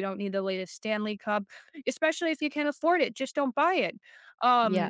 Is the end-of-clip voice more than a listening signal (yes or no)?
no